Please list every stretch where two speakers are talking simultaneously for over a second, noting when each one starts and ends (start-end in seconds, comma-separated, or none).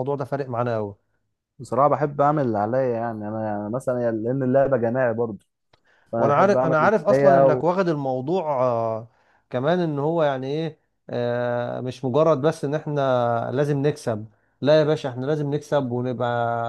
6.2-7.7